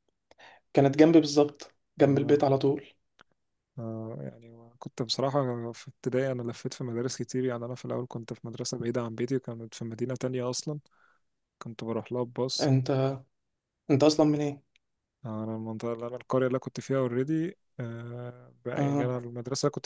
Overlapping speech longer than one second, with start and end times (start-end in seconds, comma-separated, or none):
none